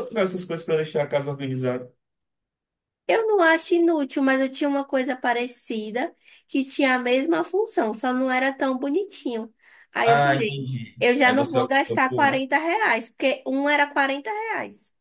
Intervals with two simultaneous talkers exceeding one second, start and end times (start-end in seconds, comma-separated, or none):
10.0-12.4